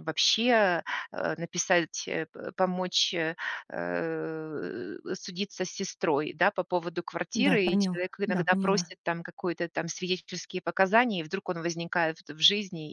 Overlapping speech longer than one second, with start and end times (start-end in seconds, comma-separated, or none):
7.3-8.9